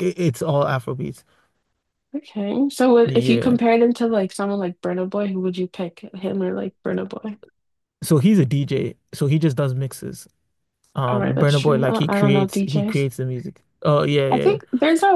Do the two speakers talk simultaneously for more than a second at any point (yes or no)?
yes